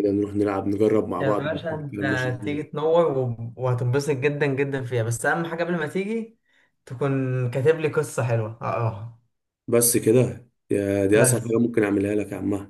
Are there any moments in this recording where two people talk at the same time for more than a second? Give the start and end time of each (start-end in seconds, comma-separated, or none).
1.2-2.6